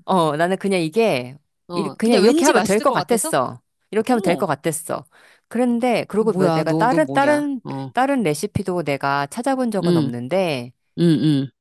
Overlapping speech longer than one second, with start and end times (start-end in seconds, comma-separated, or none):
1.7-3.3, 6.3-7.9